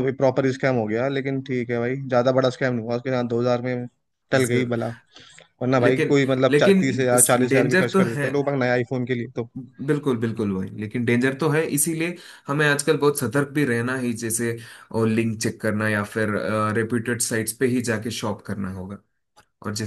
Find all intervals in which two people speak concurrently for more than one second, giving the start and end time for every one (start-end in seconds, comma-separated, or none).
5.8-8.3